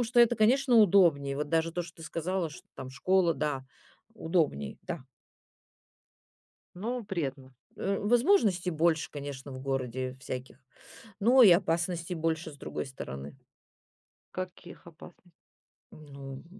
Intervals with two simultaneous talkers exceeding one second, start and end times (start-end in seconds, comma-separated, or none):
none